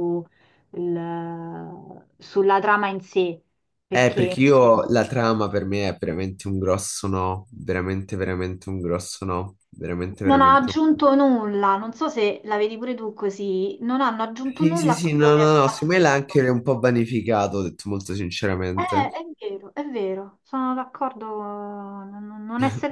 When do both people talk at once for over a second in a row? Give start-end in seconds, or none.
14.6-16.4